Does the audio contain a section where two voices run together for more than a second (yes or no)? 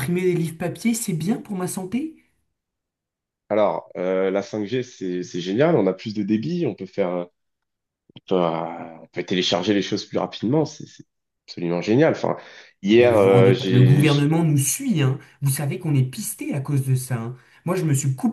yes